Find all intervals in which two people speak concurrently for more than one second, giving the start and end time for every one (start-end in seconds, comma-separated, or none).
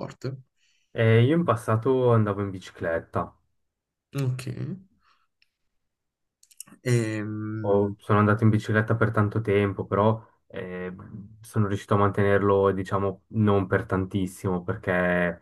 none